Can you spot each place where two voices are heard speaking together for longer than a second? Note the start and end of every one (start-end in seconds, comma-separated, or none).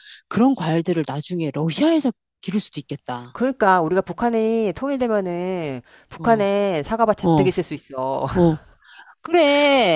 none